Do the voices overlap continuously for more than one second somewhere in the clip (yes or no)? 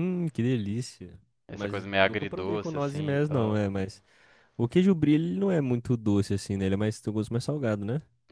yes